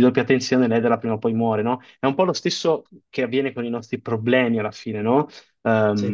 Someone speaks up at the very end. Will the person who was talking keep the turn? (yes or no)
yes